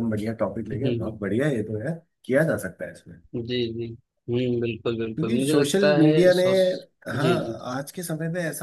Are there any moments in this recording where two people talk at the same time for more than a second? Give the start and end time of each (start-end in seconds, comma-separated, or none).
5.1-6.4